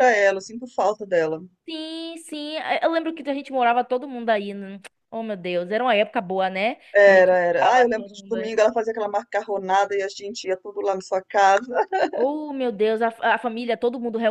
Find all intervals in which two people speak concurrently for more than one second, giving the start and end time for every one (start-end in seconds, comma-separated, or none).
6.9-8.5